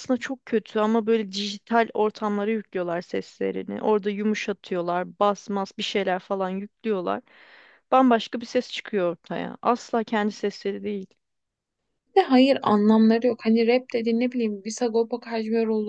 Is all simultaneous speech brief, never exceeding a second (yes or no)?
yes